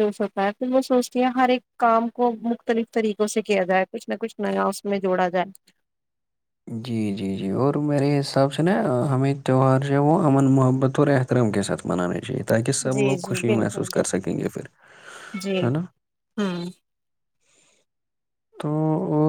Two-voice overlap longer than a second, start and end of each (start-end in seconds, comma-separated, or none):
12.9-14.4